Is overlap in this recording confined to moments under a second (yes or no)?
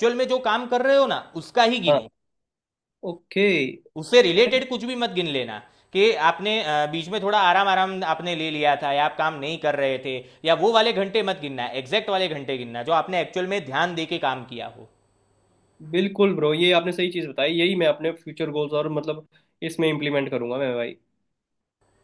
yes